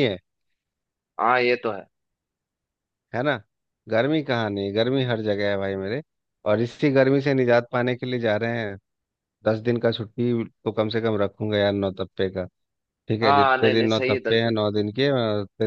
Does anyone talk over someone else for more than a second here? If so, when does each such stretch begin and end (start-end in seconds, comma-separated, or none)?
13.2-14.6